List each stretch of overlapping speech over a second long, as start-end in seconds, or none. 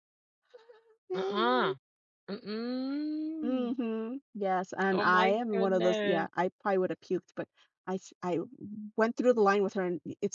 4.9-6.3